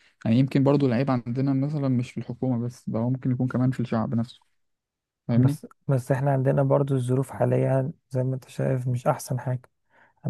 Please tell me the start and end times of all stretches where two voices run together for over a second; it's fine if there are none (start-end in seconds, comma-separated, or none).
none